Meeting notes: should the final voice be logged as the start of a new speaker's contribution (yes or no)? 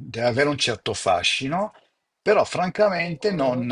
no